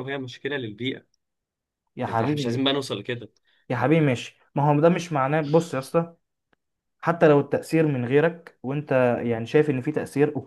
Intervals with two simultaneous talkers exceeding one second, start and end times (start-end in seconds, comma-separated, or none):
none